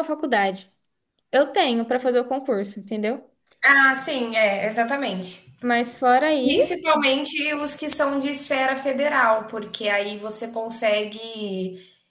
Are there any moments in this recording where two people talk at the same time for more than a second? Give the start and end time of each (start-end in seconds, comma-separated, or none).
none